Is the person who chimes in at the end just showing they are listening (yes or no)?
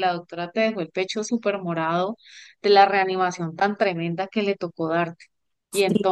no